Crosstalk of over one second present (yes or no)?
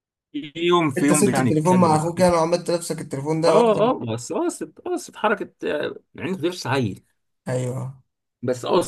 yes